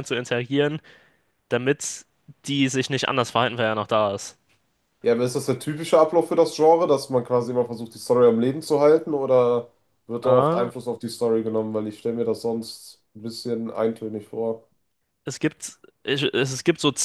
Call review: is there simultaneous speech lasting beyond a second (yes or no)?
no